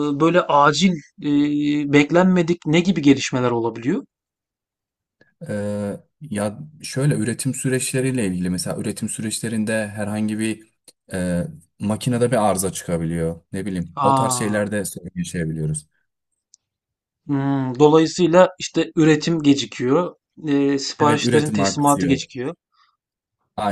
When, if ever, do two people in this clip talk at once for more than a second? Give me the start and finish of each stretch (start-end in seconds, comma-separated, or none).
21.0-22.2